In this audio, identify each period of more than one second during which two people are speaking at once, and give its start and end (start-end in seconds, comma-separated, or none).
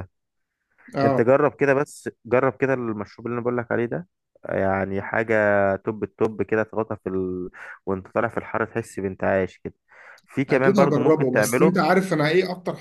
10.5-11.8